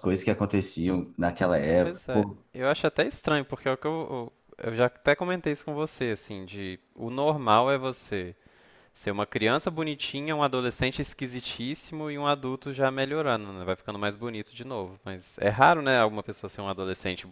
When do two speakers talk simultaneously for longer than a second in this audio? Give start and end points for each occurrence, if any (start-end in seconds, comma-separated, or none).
none